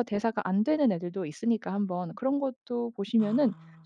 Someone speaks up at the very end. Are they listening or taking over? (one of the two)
listening